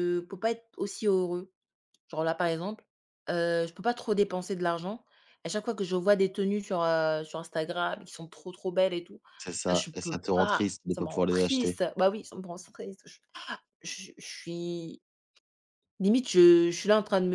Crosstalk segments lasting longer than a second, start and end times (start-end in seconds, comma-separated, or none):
9.7-11.8